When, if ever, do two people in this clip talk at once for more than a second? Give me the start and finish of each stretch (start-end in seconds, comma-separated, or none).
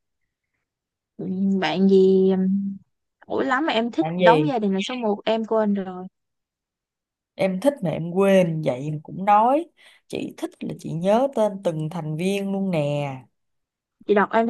none